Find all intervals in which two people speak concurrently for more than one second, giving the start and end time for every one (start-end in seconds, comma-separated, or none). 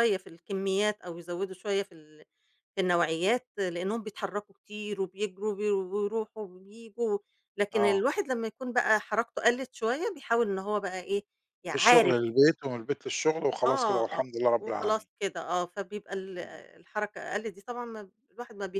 13.7-15.1